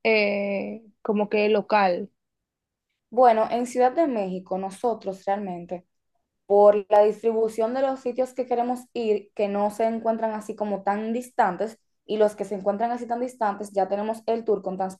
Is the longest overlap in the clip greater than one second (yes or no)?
no